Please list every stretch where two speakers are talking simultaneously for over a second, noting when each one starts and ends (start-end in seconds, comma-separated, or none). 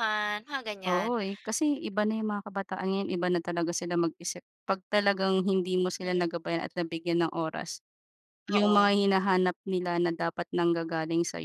none